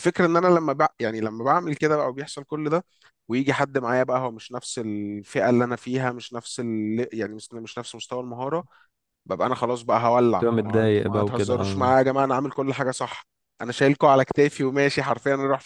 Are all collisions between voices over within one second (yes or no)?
no